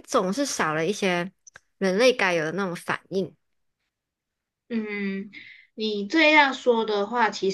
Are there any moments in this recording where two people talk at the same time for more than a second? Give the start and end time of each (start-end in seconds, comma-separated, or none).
none